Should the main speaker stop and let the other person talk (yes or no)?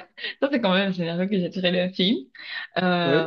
no